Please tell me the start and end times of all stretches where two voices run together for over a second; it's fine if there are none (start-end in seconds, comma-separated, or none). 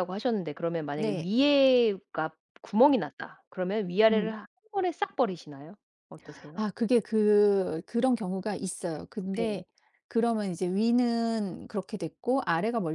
none